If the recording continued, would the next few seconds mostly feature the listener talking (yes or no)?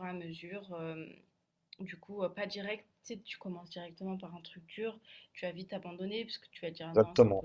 yes